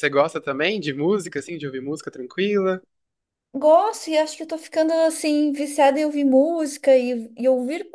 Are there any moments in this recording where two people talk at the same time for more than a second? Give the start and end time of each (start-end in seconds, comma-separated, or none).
none